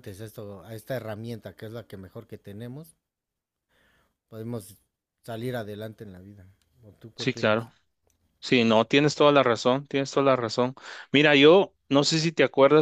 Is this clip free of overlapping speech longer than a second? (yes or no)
yes